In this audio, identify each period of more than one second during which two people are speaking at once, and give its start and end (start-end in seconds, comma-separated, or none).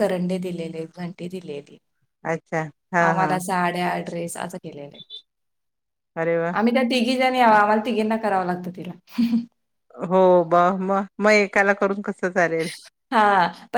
none